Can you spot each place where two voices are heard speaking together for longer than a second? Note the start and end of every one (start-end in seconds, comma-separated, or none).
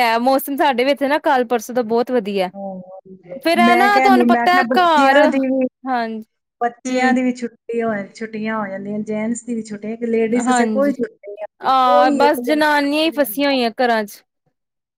3.6-5.2, 11.6-13.6